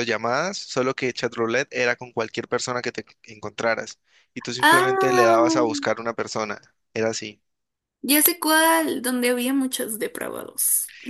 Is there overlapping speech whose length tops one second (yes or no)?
yes